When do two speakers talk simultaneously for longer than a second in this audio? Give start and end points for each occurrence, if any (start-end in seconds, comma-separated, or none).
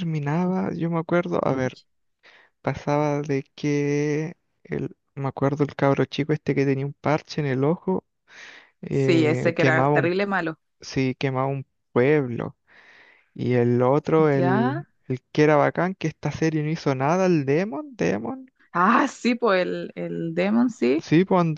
8.9-10.1